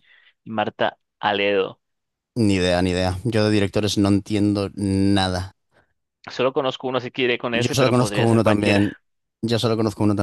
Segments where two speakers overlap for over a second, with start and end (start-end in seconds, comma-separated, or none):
7.5-8.9